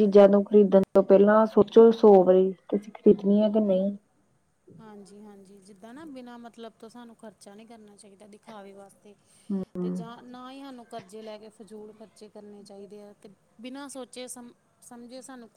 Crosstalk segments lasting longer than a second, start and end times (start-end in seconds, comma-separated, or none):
none